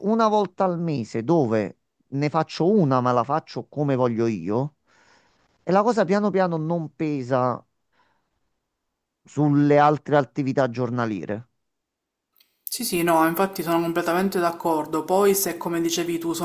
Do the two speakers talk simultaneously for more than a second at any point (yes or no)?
no